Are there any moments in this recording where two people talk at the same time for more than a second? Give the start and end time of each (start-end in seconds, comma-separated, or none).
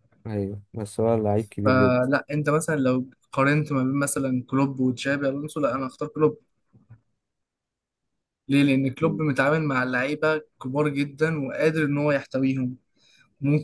none